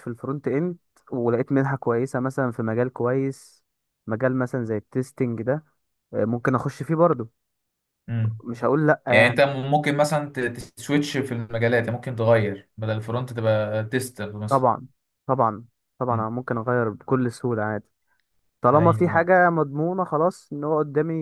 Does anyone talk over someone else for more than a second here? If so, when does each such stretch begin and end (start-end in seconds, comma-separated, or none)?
none